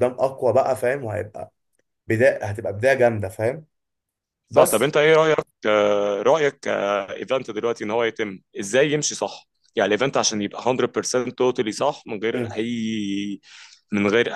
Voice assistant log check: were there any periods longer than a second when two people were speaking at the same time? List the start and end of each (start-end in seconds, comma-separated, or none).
none